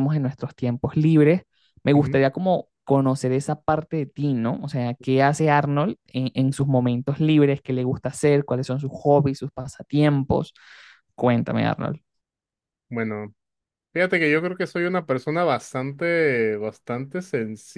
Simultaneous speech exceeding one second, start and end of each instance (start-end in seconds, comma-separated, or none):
none